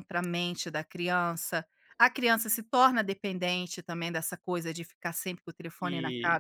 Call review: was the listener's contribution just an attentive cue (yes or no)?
no